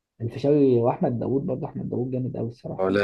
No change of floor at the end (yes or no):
yes